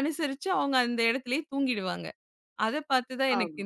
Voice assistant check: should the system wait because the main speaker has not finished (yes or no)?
yes